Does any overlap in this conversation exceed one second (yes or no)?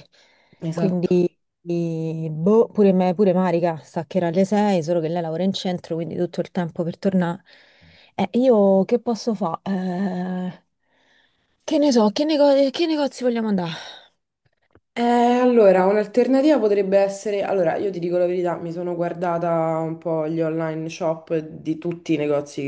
no